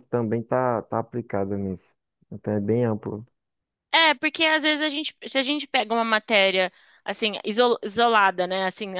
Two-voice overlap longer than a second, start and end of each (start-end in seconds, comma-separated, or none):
none